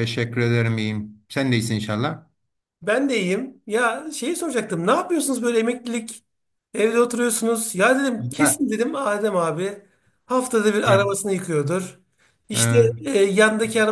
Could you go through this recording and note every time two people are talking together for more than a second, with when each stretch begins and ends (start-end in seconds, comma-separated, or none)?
none